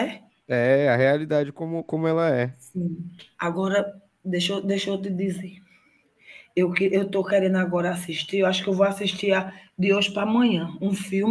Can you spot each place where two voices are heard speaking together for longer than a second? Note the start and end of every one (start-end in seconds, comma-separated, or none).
none